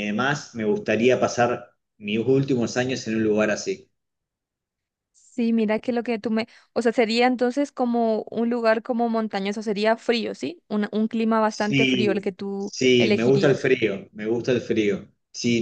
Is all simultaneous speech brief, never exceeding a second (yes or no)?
no